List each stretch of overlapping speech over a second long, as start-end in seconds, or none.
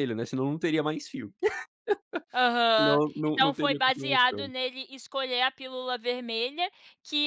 2.8-4.5